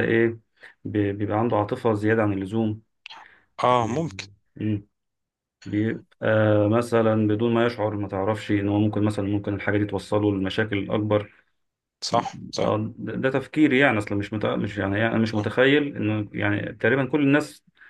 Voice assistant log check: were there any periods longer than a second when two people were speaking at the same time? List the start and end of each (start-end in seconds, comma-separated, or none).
none